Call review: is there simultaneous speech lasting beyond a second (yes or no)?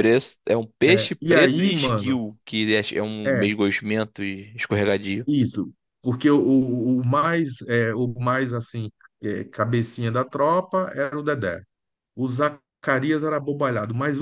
yes